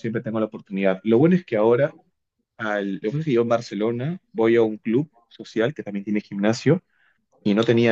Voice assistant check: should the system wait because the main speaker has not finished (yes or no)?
yes